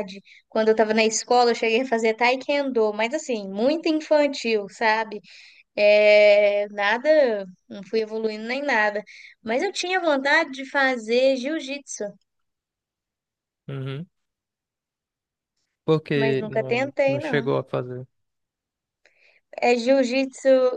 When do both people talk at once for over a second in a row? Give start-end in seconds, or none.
16.1-17.5